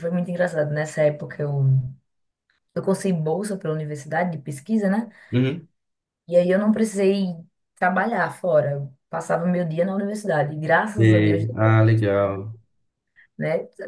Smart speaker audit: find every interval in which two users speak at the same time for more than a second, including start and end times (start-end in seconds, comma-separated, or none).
11.0-12.5